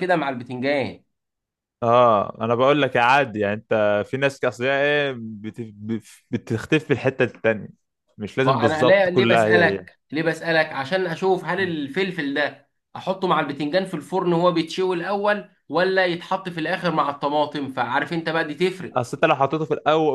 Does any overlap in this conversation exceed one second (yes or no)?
yes